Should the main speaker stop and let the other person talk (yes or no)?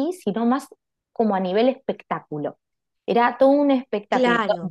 no